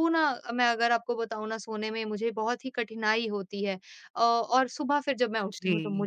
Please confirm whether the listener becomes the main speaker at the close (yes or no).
no